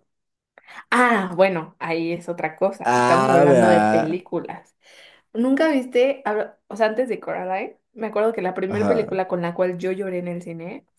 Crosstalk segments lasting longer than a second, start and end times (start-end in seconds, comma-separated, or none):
2.8-4.2